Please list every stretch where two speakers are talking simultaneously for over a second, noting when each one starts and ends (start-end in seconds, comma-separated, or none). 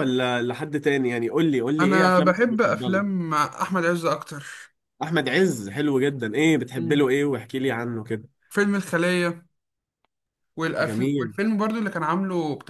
1.8-3.0